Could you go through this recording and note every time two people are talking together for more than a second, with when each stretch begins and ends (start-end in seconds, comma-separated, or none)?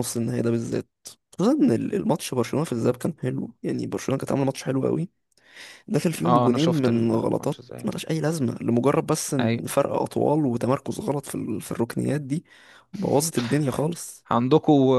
6.2-7.9